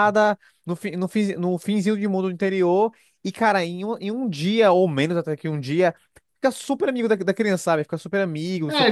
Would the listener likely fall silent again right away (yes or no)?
no